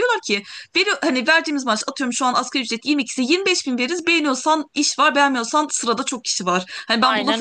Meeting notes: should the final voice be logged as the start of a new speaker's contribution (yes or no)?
no